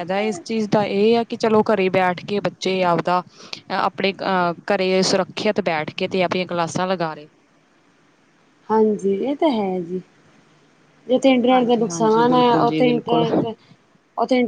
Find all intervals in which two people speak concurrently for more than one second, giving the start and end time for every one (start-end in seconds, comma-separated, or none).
11.5-13.2